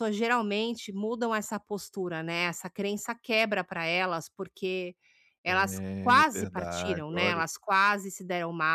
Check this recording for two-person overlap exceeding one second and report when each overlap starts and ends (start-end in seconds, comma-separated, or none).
5.8-7.4